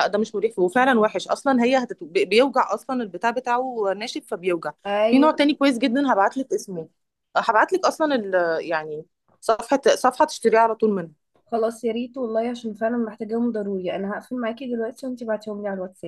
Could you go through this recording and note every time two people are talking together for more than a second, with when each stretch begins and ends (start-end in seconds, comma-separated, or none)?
none